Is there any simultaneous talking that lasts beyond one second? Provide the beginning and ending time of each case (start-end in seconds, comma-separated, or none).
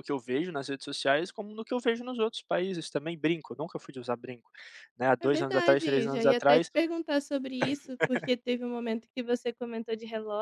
5.2-6.7